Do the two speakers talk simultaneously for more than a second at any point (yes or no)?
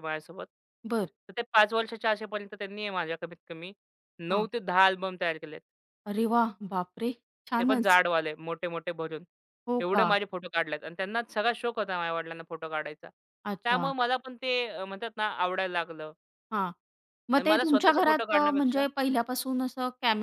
yes